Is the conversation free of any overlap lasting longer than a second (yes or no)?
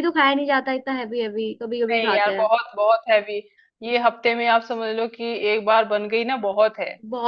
yes